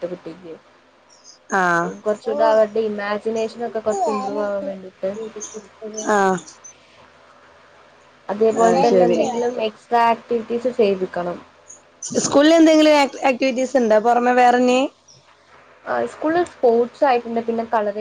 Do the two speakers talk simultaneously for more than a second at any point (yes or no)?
no